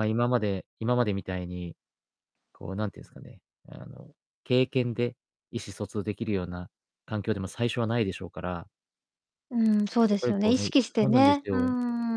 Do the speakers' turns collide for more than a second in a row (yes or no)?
yes